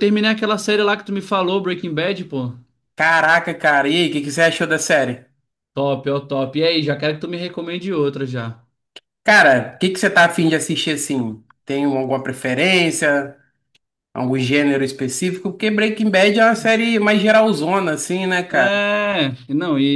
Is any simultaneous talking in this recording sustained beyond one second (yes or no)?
no